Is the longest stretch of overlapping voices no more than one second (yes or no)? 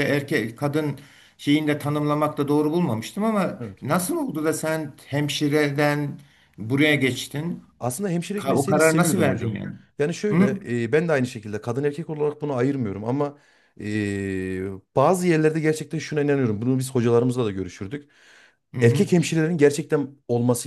no